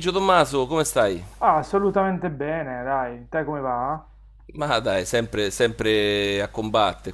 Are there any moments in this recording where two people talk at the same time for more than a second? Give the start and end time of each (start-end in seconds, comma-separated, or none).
none